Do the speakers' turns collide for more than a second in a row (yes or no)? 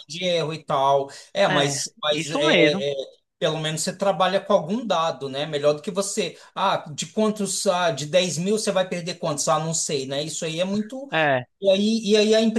yes